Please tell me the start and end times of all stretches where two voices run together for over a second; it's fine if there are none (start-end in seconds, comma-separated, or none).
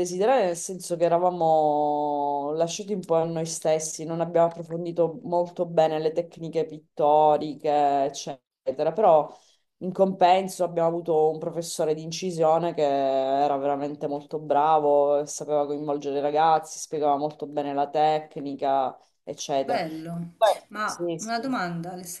19.6-21.6